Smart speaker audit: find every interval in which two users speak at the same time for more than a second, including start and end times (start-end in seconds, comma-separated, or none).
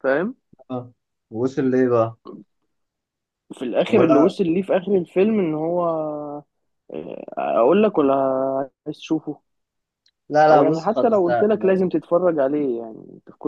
10.5-12.0